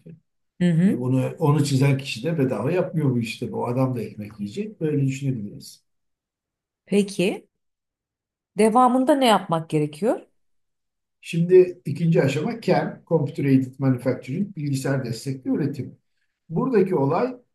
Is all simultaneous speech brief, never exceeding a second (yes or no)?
yes